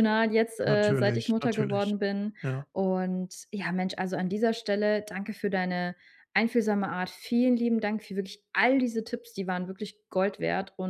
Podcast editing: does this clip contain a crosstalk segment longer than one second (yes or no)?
yes